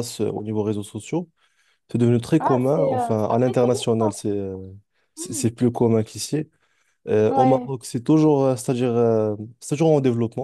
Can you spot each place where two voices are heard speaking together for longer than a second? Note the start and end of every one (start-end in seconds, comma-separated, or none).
2.4-4.1